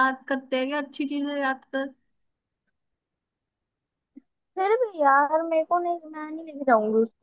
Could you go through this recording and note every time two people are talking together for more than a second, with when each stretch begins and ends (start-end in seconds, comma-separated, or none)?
none